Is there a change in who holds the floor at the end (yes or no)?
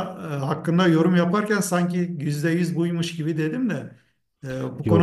no